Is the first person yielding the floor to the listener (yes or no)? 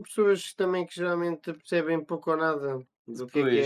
no